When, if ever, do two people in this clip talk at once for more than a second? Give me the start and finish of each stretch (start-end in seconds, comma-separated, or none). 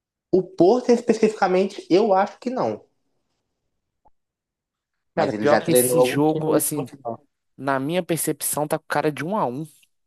5.2-6.8